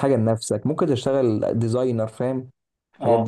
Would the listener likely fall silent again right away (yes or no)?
no